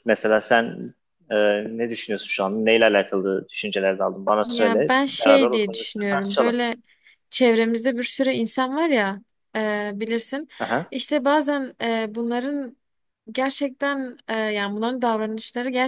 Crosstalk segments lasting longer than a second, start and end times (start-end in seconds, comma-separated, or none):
4.4-6.5